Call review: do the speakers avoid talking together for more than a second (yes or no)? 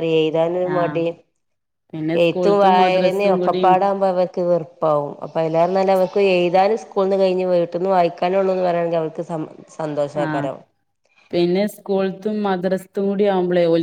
no